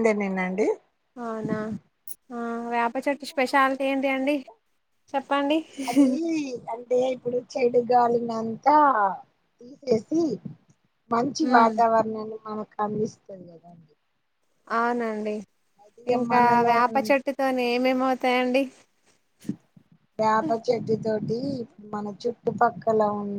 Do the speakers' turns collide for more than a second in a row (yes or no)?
yes